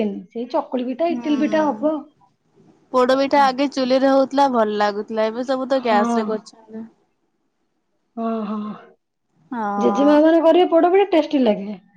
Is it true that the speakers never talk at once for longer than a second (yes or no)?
yes